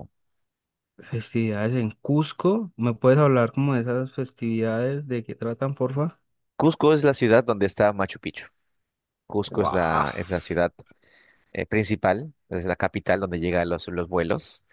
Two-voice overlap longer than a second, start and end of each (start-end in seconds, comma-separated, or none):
none